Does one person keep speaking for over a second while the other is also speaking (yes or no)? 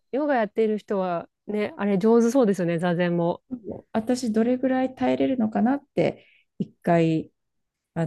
no